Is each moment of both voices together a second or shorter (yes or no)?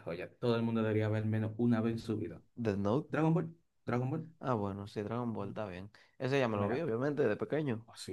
yes